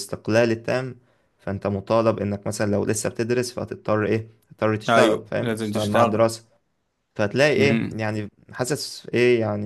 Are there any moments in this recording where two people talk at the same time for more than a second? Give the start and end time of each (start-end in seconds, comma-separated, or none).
4.9-6.2